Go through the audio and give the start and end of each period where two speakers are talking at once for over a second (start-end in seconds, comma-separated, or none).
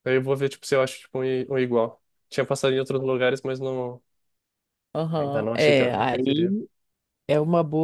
5.2-6.5